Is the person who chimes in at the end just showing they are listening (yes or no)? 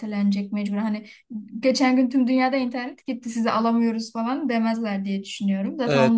no